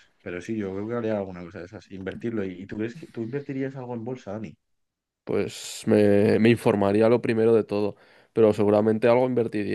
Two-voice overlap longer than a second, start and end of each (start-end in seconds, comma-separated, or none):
none